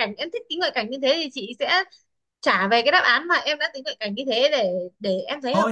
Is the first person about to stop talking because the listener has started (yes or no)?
yes